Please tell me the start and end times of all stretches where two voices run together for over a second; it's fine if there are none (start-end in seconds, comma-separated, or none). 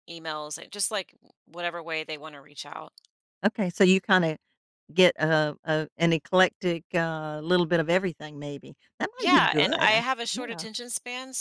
9.2-10.7